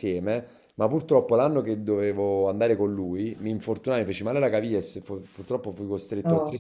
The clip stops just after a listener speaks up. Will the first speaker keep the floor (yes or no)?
yes